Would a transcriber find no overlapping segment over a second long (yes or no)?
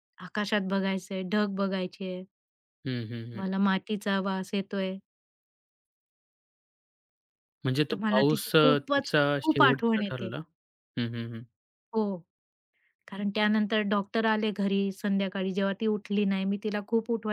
no